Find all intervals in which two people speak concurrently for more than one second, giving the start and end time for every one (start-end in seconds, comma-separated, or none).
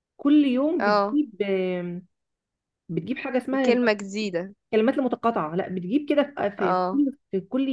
none